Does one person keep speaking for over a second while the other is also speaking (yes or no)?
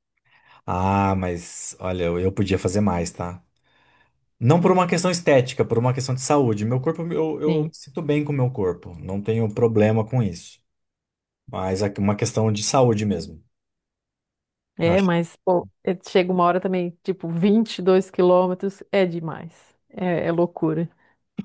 no